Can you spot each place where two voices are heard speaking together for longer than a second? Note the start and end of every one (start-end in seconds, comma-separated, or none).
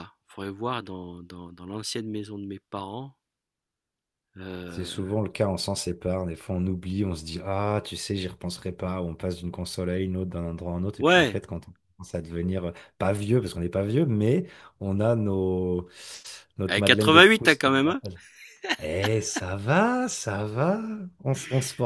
16.7-18.0